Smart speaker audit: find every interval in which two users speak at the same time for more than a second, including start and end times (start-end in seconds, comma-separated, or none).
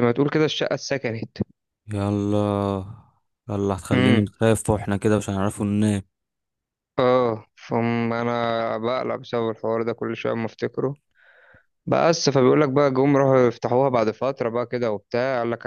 none